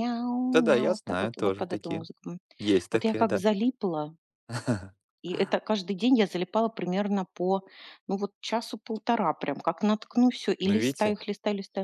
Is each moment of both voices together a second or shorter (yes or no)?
no